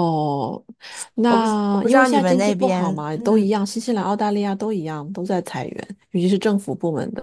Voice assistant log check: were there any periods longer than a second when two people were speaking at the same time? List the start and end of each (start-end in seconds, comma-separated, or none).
1.3-3.5